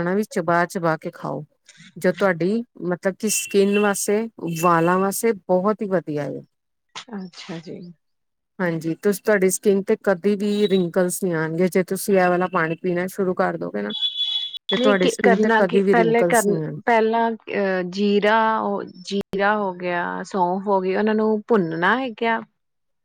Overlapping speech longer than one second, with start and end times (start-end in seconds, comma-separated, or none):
14.8-16.4